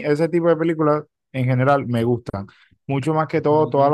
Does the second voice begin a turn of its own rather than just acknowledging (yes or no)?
no